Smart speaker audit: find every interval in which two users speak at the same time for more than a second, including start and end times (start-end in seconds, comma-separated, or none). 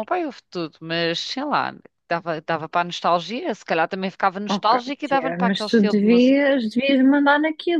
4.5-6.4